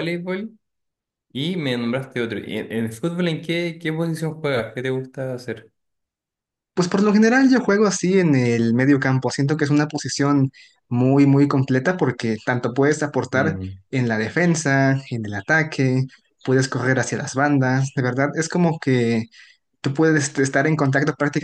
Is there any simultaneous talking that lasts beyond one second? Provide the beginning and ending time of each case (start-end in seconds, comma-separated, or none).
none